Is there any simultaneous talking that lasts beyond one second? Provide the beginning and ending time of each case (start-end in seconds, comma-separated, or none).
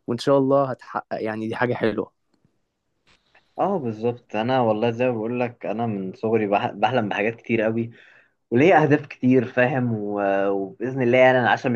none